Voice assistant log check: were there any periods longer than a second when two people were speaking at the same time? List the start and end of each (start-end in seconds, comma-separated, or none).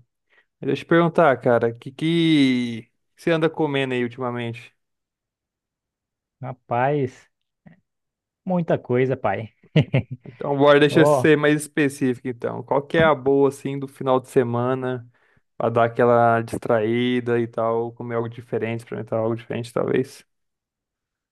none